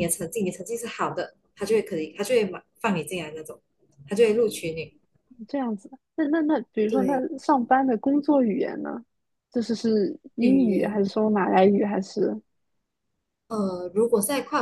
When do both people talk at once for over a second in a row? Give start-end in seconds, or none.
none